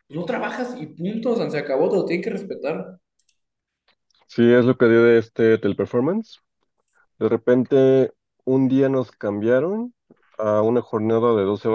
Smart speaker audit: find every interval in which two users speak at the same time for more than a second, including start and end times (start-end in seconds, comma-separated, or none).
none